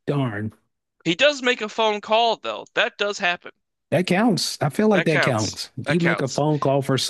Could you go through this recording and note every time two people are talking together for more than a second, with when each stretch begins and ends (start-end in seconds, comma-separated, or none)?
4.9-6.4